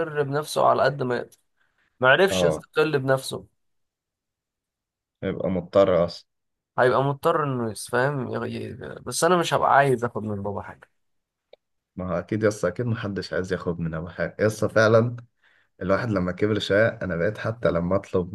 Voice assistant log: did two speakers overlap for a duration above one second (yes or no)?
no